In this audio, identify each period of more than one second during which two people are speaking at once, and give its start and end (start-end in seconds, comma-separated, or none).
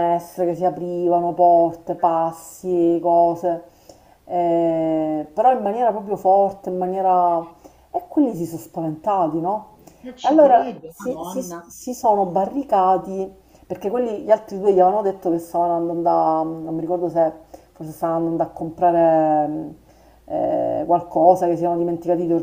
10.2-11.7